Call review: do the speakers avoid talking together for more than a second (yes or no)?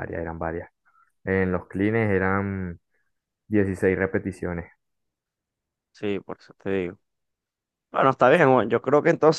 yes